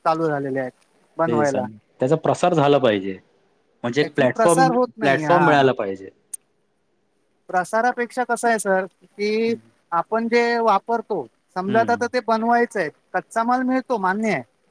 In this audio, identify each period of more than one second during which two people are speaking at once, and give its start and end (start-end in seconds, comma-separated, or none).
4.0-5.4